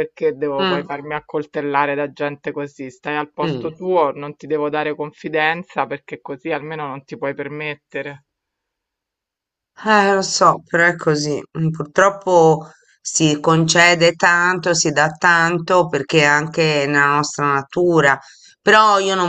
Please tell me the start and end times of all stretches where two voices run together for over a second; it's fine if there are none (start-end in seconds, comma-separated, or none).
none